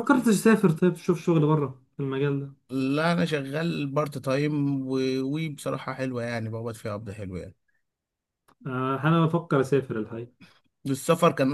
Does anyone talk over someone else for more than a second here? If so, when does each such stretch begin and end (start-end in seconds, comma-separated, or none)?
none